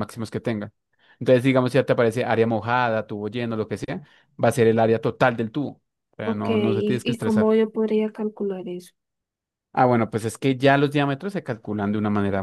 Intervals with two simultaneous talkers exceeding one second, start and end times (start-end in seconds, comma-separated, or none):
6.2-7.5